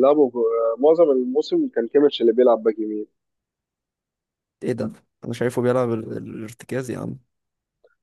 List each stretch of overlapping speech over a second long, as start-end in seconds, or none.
none